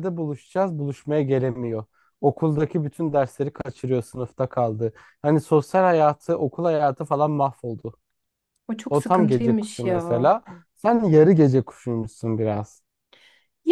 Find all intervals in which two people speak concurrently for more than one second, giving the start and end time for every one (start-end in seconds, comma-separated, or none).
8.9-10.3